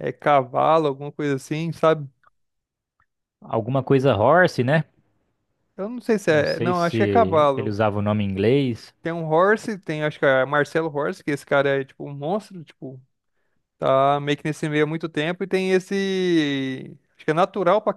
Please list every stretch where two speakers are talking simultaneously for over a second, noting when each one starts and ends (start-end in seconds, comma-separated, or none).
6.3-7.8